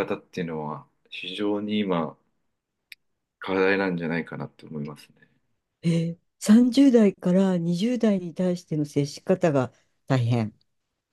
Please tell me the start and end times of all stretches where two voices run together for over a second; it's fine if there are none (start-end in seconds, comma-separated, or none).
none